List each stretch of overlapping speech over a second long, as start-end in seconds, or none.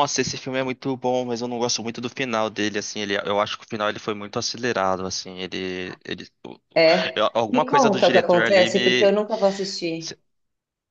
7.2-9.1